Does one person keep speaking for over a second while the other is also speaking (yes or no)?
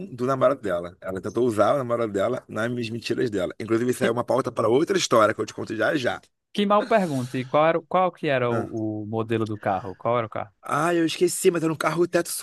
no